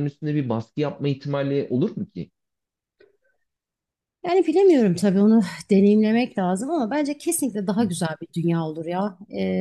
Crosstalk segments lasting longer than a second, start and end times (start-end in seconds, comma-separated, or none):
none